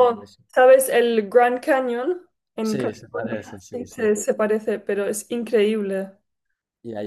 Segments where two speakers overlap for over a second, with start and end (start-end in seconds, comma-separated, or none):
2.6-4.0